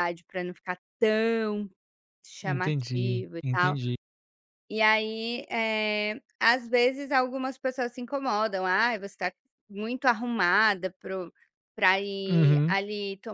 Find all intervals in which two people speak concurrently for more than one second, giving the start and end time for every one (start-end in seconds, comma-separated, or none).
2.4-3.8